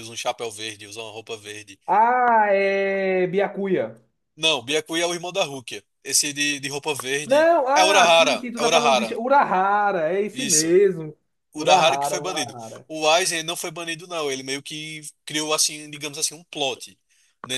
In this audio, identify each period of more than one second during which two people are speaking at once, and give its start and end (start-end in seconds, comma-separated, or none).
7.2-9.2, 11.5-12.9